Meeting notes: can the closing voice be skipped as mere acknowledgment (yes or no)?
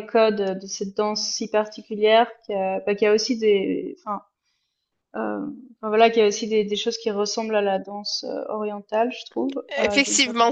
no